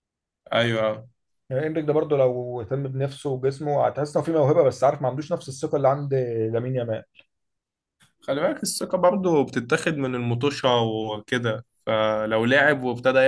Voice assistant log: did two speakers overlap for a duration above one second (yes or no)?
no